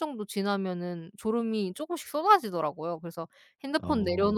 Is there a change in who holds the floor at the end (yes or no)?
no